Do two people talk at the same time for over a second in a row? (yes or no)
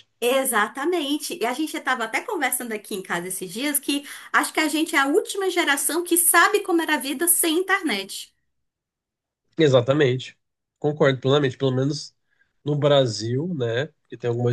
no